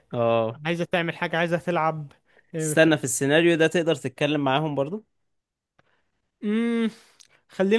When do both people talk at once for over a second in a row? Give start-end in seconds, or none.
none